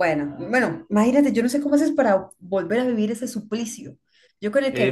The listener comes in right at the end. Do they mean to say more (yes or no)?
yes